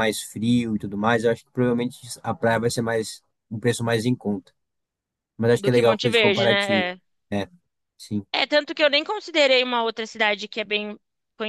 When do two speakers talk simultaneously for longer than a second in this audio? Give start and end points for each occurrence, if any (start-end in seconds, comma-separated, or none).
5.6-6.9